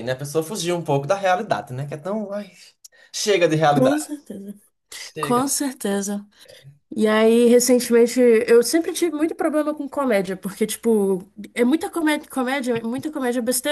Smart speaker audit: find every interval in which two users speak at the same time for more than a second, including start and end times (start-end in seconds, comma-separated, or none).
none